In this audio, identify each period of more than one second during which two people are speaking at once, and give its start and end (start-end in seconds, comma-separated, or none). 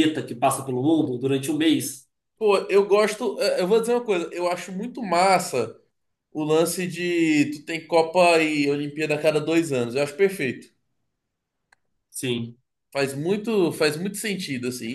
none